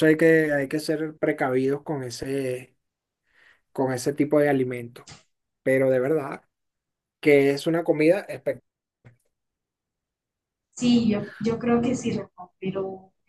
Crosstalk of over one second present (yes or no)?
no